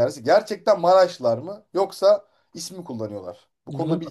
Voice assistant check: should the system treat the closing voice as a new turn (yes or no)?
yes